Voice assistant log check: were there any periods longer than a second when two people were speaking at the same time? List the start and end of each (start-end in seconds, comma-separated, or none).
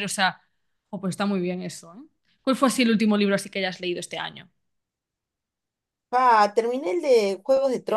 none